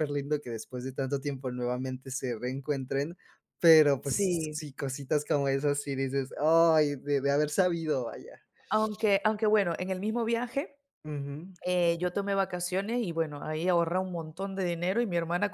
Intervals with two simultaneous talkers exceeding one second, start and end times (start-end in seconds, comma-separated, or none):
none